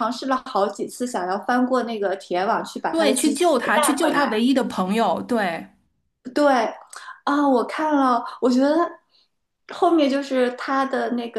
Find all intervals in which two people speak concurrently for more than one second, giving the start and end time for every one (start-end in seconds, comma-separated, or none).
2.9-4.3